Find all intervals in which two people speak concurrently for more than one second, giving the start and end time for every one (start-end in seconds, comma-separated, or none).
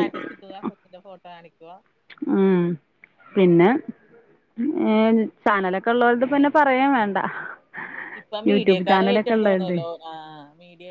8.5-9.8